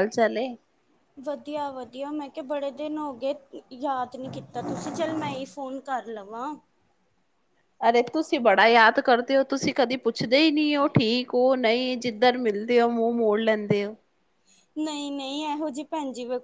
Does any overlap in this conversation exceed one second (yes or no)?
no